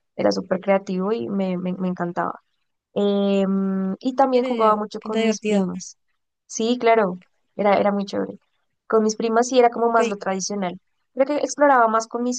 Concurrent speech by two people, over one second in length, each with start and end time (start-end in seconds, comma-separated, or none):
4.3-5.7